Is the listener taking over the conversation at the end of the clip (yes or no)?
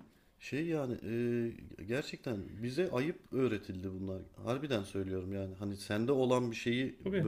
no